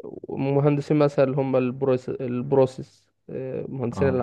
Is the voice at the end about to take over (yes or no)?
no